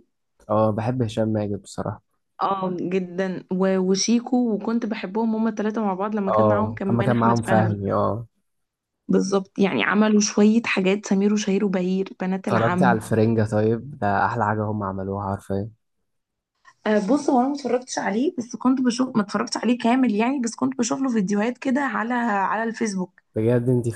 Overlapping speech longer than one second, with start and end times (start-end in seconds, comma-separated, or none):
6.3-7.8